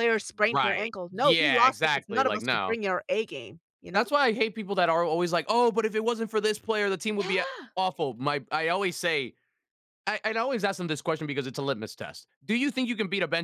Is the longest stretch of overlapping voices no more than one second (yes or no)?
no